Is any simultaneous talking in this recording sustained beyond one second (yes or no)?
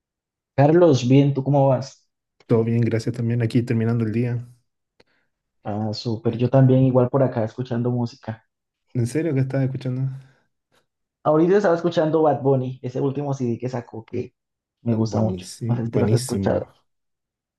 yes